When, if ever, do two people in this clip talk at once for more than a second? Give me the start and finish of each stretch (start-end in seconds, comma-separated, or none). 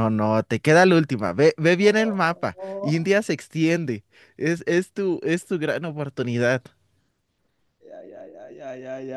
1.8-3.1